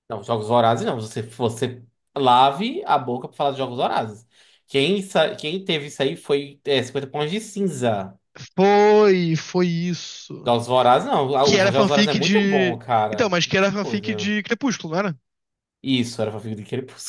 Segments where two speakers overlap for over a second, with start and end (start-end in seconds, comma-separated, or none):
11.4-14.3